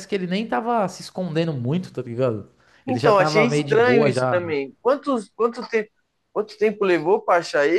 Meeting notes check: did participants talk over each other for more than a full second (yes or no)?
yes